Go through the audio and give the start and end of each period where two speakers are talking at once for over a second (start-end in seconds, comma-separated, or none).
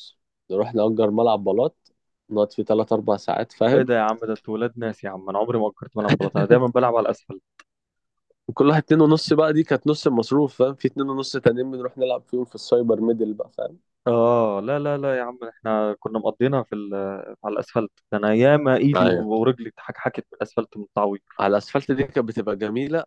none